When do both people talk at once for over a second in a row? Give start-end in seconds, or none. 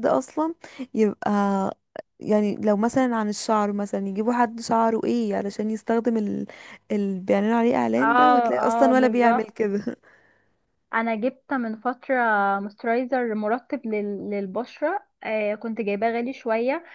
8.0-9.4